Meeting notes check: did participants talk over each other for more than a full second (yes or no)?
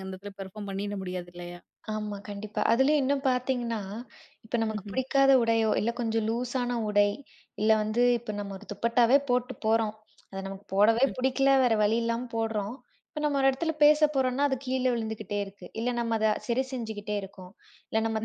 no